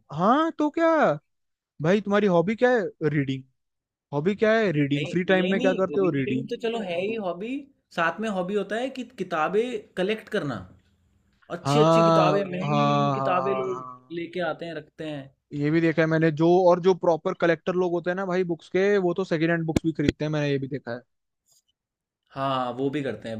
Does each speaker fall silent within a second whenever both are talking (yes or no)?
no